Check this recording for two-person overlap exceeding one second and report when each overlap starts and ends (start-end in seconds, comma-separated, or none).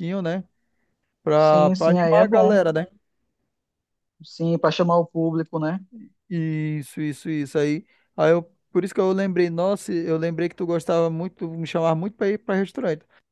1.3-2.6